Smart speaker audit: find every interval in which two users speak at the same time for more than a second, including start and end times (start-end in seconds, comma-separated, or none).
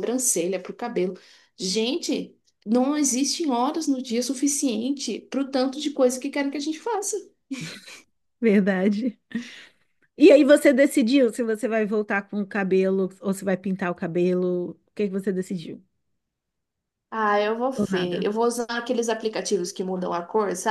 none